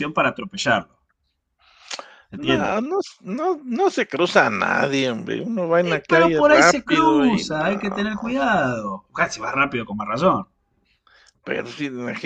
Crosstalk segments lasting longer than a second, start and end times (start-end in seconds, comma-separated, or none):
5.8-8.0